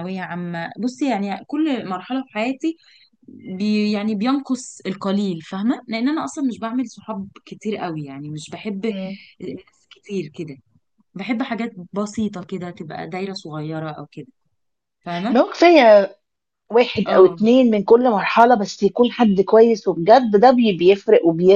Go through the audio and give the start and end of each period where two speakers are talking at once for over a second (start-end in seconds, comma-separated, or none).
none